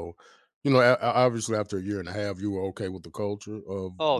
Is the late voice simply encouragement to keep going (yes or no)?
no